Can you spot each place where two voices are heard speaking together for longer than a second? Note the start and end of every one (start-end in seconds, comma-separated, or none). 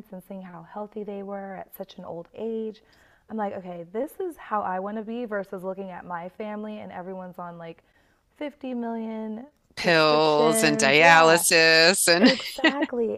9.8-11.4